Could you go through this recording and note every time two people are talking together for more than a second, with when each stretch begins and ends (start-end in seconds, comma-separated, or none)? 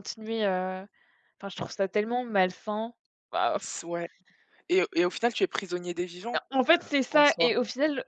none